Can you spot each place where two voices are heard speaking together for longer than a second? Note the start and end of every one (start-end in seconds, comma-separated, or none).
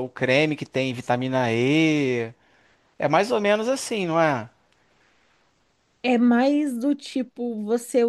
none